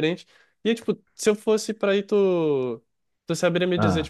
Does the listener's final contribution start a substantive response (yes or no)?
no